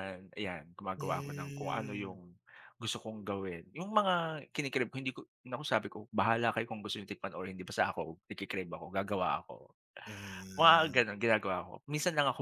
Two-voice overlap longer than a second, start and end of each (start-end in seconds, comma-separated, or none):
1.0-2.2